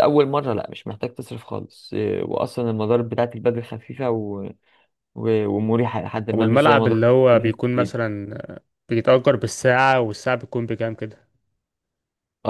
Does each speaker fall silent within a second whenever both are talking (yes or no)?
no